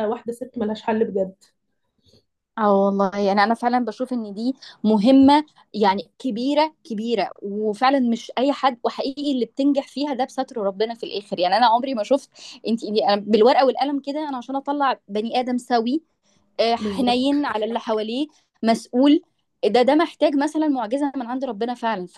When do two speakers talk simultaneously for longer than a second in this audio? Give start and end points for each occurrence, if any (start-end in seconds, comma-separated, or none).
none